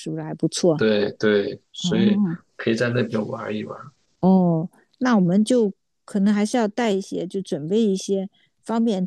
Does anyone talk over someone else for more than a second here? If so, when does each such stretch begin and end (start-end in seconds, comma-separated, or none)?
none